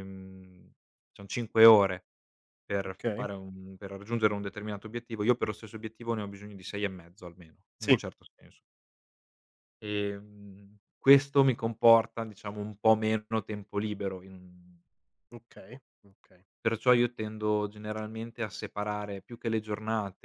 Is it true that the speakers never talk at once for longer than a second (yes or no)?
yes